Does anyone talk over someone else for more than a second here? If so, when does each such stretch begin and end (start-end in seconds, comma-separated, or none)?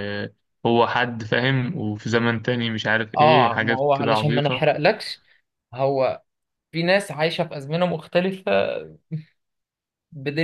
3.2-4.7